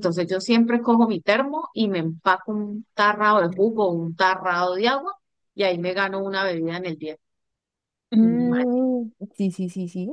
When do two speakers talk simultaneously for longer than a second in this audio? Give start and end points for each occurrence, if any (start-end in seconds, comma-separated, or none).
none